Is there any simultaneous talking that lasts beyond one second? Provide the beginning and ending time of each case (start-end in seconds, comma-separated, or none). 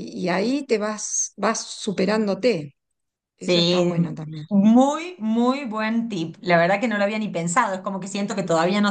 none